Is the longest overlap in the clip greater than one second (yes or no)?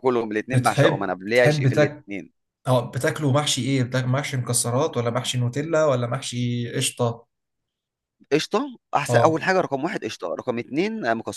yes